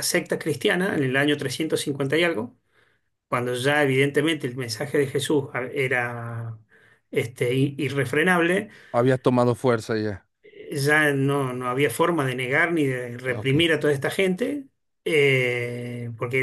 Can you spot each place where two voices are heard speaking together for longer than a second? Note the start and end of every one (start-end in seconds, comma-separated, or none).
none